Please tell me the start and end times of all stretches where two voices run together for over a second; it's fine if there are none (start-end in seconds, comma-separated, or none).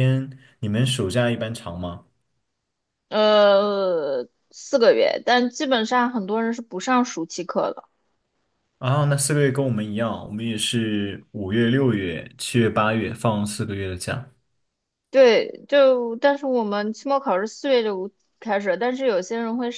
none